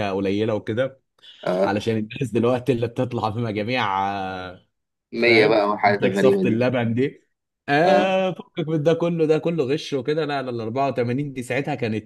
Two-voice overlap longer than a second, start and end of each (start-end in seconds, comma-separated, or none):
5.2-6.6